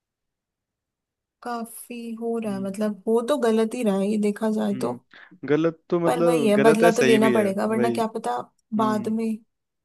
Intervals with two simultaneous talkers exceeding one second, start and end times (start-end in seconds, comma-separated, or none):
6.0-8.0